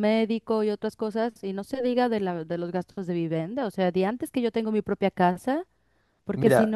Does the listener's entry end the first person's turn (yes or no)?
no